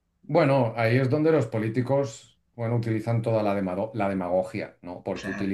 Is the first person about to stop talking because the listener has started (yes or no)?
no